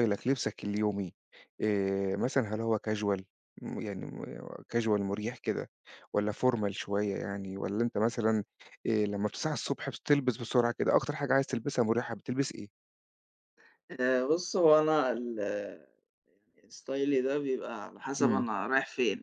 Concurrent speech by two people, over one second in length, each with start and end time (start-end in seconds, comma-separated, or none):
none